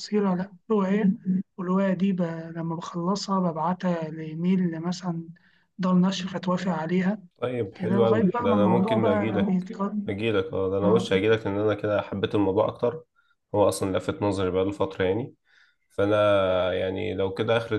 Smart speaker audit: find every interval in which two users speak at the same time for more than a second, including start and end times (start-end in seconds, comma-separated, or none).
7.7-9.7